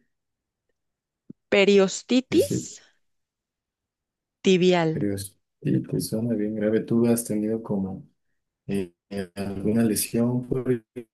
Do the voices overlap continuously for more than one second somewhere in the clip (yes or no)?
no